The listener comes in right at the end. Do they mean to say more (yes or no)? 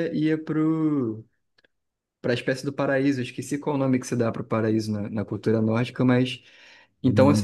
yes